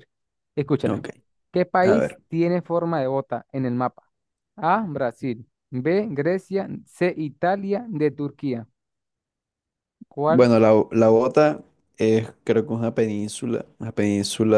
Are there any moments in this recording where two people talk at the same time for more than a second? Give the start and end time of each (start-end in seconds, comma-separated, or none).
none